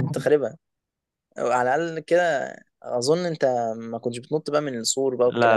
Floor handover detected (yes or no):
yes